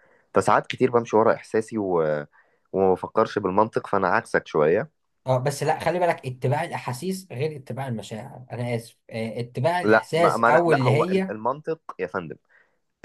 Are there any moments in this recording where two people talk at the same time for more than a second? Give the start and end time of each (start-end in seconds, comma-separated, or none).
9.8-11.3